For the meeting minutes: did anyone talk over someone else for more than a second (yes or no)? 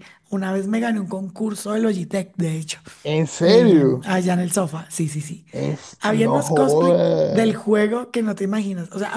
yes